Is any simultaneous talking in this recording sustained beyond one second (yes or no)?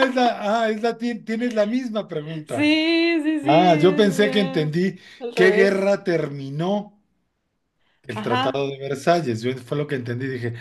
yes